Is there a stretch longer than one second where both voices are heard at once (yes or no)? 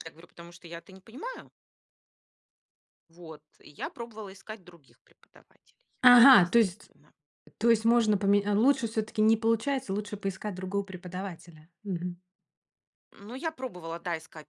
no